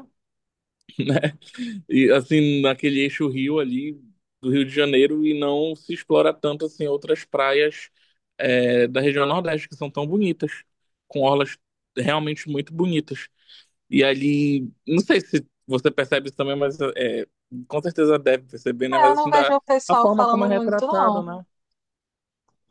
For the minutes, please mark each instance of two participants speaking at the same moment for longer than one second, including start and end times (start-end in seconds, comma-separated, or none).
18.9-21.2